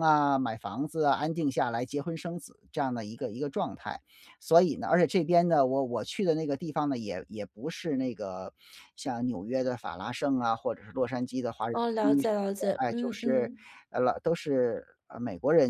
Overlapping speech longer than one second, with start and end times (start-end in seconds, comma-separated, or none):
11.7-13.5